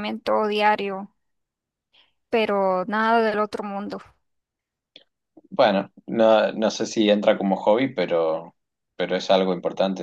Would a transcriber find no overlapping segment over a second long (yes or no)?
yes